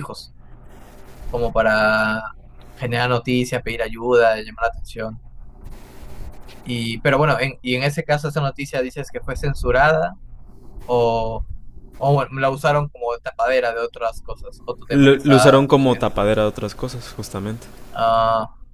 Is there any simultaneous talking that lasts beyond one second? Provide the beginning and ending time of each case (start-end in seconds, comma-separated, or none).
14.9-16.1